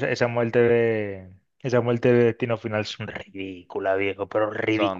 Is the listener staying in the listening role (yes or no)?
no